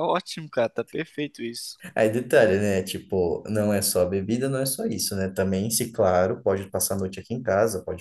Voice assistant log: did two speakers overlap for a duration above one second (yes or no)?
no